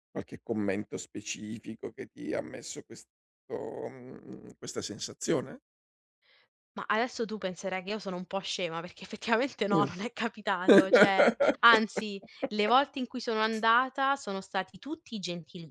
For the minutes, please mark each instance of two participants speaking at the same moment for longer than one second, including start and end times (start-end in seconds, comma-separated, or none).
none